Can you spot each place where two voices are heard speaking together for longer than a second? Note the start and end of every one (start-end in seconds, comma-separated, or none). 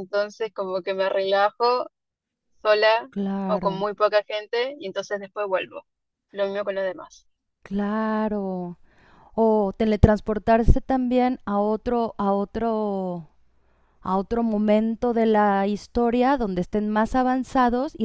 none